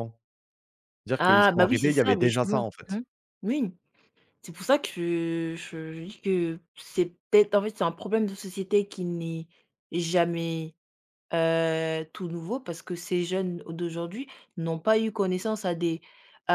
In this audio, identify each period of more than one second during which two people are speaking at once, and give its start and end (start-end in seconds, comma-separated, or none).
1.2-3.0